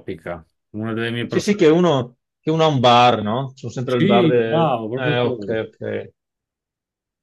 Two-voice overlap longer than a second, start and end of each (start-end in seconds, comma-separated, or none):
3.9-5.6